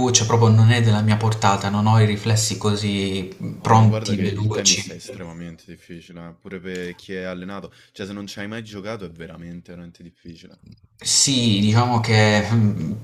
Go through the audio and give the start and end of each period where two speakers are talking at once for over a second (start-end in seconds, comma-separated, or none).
3.6-5.0